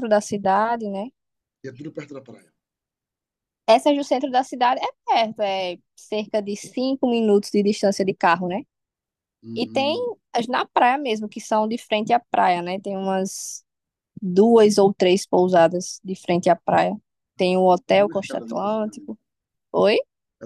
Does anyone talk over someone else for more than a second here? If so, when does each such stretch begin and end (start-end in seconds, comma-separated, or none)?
17.4-19.1